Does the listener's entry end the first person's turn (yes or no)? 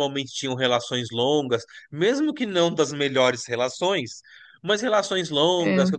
no